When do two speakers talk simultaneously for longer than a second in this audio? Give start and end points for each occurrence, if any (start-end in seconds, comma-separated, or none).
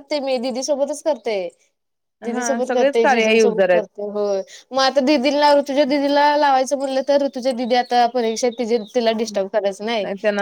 2.3-3.8